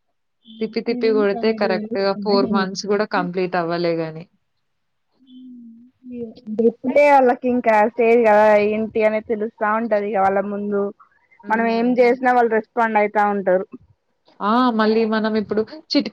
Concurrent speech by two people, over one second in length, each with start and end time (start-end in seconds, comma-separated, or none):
0.9-2.6